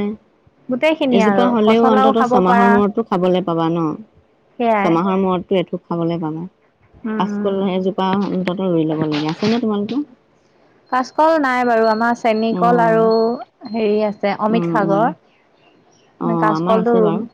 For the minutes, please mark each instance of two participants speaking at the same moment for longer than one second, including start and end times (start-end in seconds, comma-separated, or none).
0.7-2.7